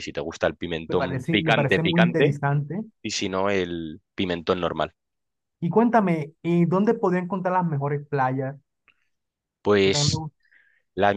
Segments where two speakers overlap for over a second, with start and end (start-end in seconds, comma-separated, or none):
0.9-2.4